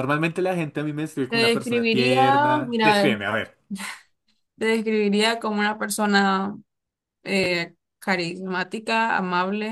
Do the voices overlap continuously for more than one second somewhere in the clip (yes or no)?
yes